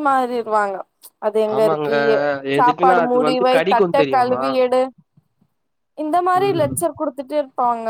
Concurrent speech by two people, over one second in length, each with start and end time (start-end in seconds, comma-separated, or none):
2.6-4.4